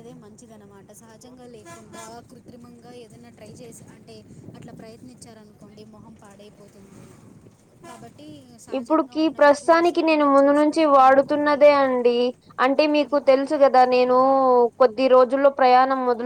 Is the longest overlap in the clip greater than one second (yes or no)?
yes